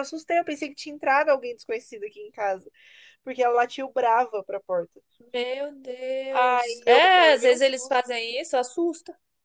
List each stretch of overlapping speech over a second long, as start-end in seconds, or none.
6.3-8.1